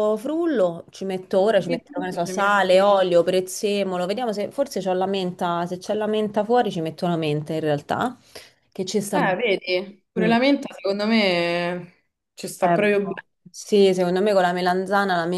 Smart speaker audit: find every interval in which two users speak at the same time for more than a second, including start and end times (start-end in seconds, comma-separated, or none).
1.5-2.9